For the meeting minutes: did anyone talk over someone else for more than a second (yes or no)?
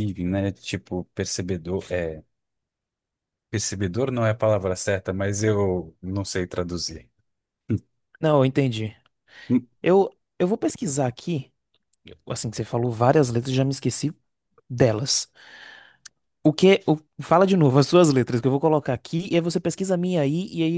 no